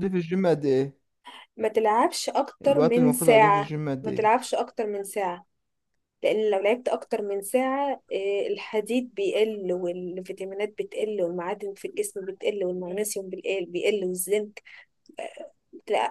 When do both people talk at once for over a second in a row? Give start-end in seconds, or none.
2.7-4.2